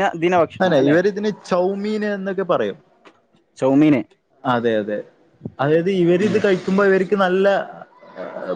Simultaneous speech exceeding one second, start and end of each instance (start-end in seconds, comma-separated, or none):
none